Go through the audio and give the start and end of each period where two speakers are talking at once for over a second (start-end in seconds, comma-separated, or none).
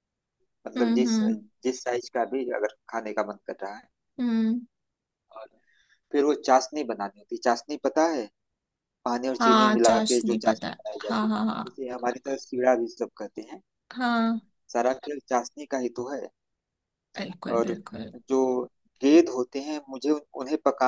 9.4-11.8